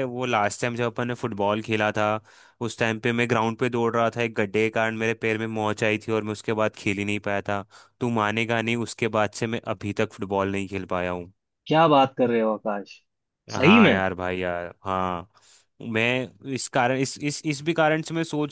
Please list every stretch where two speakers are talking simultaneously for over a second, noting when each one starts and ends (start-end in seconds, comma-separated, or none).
none